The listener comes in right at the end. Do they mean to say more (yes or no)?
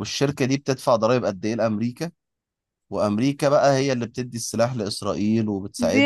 yes